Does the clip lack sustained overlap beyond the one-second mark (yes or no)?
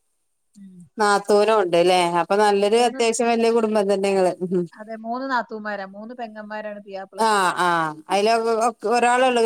yes